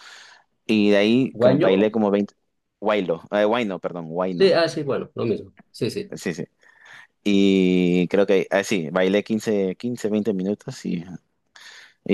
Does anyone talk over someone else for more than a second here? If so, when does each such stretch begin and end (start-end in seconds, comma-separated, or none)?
none